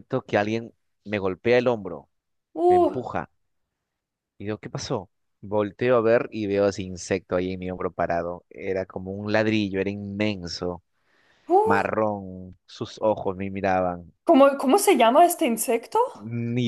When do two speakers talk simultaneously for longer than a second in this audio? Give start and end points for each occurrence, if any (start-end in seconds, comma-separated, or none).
none